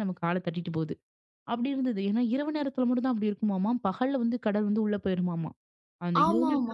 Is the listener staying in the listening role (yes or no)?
no